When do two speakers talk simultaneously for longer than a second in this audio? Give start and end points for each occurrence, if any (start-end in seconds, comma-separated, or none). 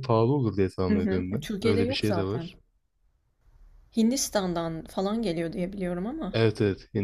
0.9-2.5